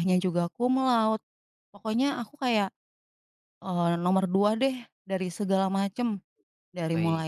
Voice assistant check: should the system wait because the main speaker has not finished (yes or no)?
yes